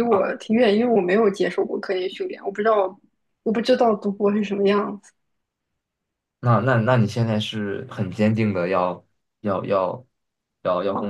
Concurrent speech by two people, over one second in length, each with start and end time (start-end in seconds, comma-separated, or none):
none